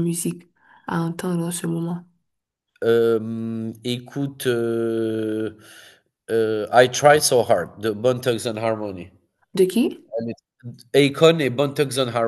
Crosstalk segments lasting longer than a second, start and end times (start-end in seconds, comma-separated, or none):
none